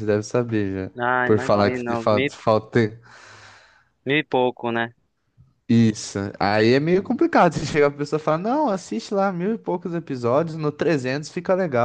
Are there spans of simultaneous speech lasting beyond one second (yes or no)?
yes